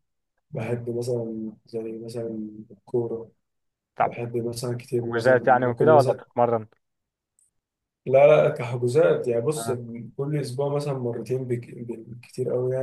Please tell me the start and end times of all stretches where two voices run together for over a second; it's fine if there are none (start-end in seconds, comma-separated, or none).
5.0-6.2